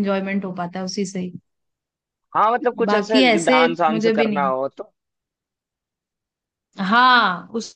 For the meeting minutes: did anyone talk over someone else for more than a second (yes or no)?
yes